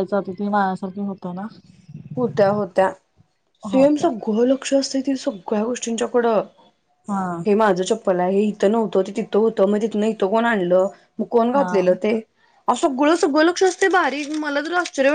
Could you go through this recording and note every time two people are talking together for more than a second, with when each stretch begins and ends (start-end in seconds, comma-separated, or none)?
none